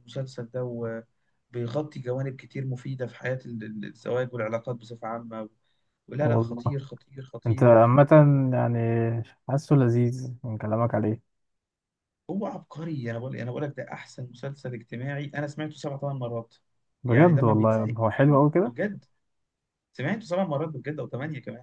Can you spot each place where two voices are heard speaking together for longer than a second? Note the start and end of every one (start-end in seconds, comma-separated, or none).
17.1-18.7